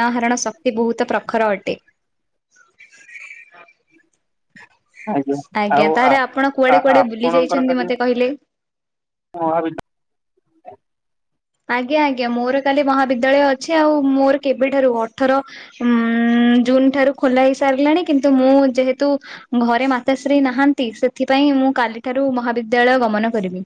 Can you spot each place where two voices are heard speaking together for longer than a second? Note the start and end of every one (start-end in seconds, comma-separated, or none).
5.8-7.9